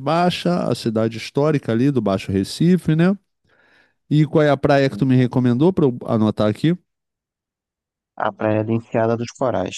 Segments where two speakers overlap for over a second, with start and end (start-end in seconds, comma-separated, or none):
none